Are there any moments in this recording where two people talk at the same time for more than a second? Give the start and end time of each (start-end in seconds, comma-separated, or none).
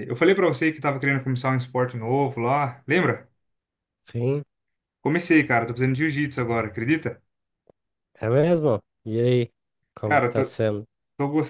none